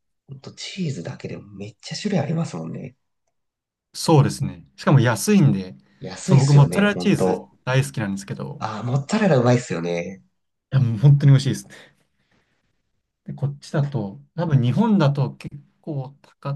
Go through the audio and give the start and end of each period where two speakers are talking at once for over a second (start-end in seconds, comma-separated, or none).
6.2-7.5